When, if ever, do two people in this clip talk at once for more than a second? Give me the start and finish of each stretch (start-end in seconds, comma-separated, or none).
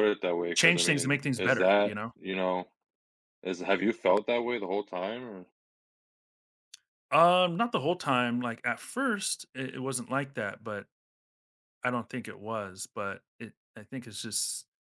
0.6-2.1